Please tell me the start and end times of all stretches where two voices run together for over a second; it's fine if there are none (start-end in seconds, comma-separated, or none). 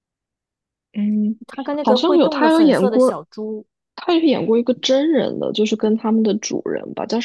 1.8-3.2